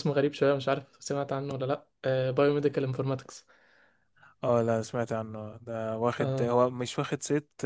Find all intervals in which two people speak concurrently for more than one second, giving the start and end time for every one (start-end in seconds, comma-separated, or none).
none